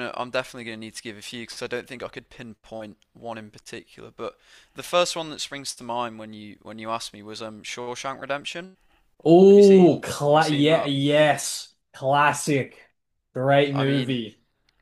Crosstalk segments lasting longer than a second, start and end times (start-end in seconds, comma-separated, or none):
9.5-10.9